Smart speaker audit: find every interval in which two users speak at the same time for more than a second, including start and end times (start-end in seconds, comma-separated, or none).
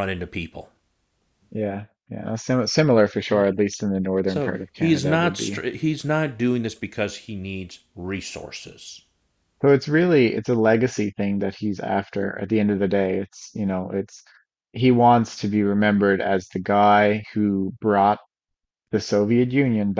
4.2-5.6